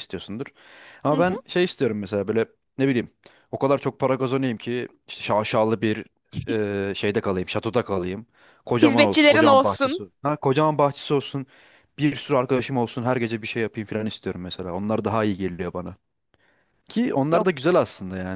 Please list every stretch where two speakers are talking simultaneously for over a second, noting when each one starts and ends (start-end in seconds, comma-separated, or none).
8.8-10.0